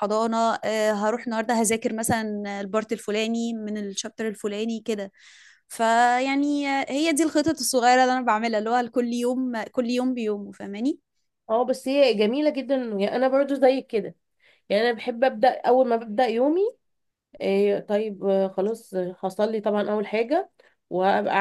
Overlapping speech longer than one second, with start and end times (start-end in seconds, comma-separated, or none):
none